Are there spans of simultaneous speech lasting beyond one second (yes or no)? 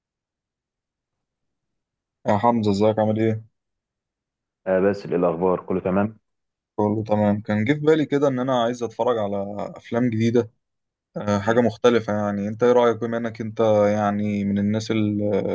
no